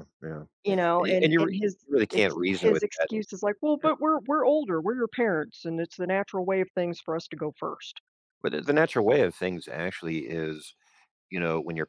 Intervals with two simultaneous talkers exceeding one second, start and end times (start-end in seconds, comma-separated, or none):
1.0-3.1